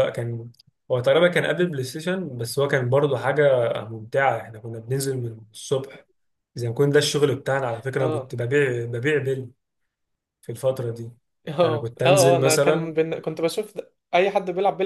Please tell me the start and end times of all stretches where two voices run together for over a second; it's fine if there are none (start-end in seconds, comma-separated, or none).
11.6-12.9